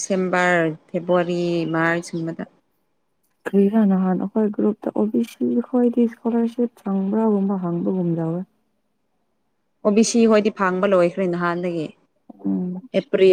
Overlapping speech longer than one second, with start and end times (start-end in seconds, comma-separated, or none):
none